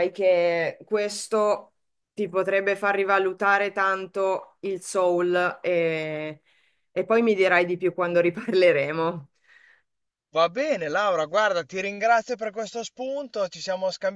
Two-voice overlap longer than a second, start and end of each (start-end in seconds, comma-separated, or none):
none